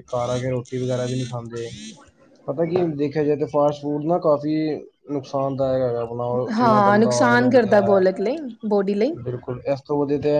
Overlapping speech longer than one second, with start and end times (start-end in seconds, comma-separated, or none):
6.6-8.0